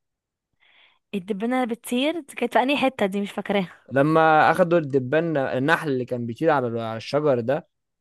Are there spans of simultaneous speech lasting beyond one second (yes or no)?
no